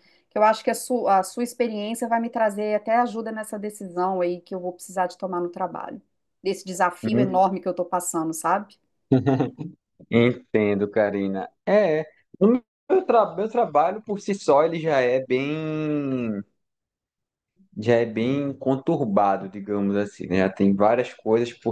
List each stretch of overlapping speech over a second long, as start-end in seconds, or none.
none